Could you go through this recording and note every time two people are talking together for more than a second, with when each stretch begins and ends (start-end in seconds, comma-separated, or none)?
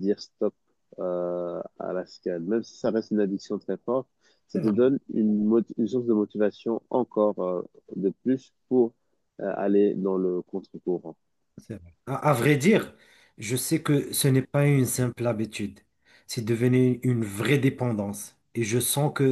none